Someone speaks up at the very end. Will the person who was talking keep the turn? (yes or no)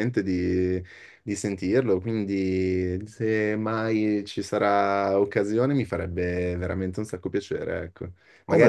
yes